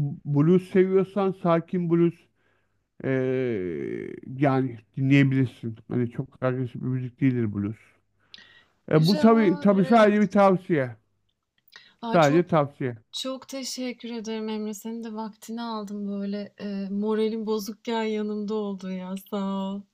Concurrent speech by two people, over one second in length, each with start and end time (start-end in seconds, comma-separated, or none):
8.9-10.3